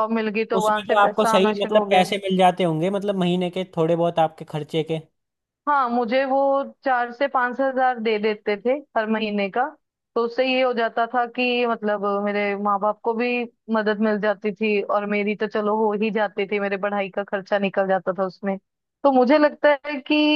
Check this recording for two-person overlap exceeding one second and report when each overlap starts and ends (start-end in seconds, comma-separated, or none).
0.6-2.0